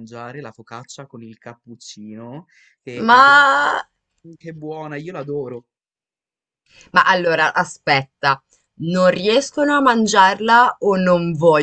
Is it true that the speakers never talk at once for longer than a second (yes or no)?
yes